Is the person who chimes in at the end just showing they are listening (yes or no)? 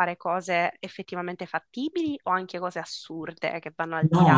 no